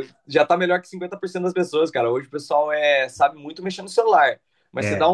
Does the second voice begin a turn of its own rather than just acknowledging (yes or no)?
no